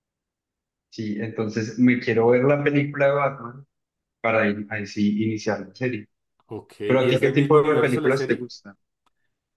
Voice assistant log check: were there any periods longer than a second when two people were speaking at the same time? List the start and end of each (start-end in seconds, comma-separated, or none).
6.9-8.5